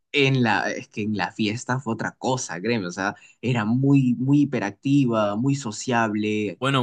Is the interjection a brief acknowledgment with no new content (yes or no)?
no